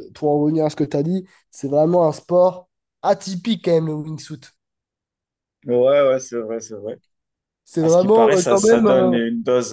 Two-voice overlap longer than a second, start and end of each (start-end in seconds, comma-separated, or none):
7.8-9.2